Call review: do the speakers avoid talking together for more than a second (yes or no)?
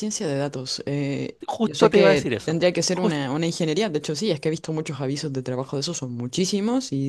no